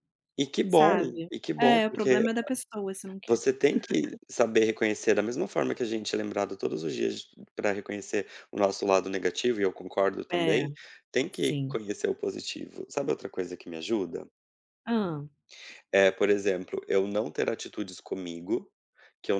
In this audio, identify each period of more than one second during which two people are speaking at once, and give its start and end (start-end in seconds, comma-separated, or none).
0.7-2.3